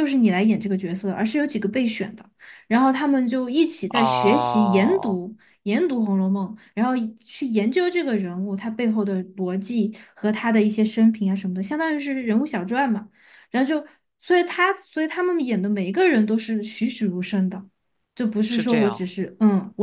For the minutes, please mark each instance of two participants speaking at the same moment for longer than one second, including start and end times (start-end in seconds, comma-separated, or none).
3.9-5.2